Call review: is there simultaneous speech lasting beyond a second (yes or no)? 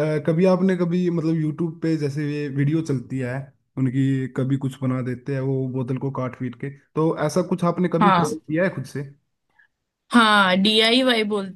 no